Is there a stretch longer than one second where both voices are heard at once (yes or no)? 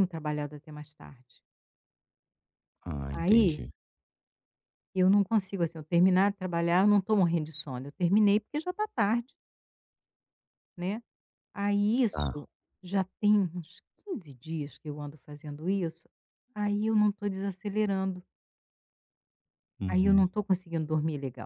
no